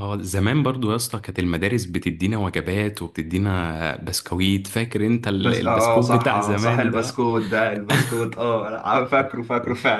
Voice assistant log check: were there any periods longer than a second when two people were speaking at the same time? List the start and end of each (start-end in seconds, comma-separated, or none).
5.4-7.3